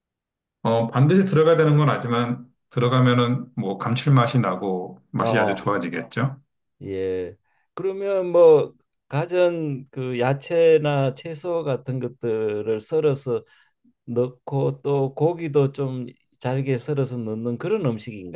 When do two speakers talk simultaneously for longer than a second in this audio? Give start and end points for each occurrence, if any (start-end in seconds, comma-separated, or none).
none